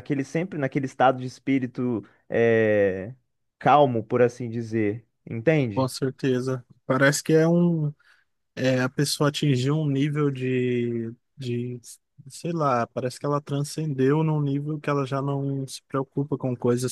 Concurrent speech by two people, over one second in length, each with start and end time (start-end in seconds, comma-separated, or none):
none